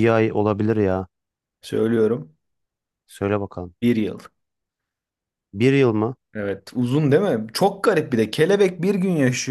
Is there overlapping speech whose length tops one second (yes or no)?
no